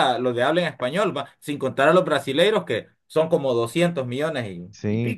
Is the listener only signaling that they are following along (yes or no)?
no